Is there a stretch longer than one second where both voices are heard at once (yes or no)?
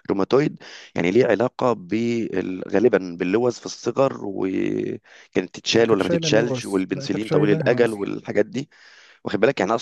yes